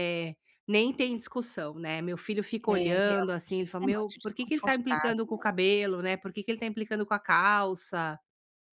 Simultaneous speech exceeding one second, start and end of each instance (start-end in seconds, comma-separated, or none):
2.7-5.2